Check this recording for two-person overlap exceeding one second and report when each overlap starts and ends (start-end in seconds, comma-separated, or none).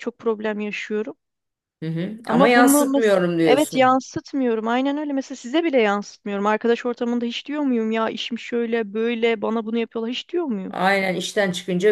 2.2-4.0